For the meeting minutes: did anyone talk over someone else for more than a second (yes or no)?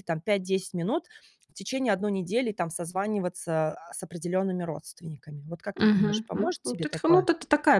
yes